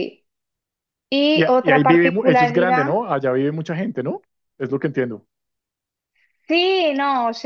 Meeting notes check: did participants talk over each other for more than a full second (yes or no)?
yes